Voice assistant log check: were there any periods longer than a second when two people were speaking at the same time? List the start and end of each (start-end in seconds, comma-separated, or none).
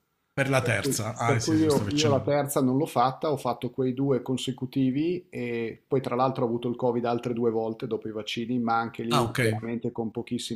0.6-2.4